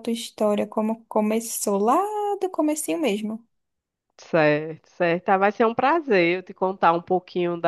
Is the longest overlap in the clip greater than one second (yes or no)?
no